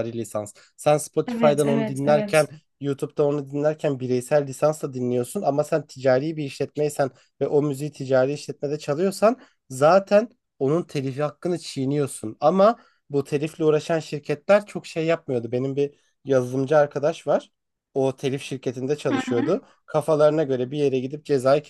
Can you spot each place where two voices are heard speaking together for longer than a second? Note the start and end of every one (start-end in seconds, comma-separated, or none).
1.3-2.5